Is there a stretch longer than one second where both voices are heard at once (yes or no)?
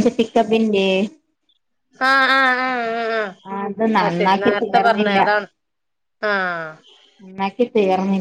yes